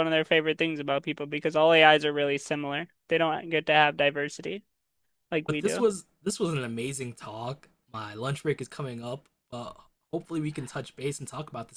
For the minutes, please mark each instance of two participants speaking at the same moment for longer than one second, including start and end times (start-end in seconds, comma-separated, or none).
none